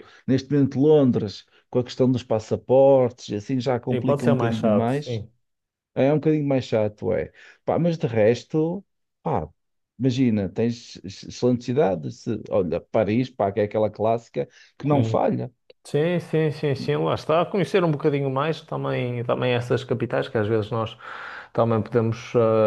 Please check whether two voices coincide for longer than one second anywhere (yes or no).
yes